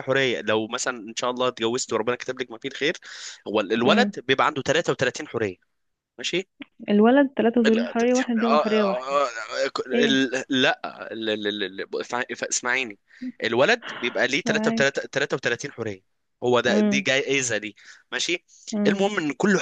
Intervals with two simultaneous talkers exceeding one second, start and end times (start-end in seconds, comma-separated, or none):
7.7-9.2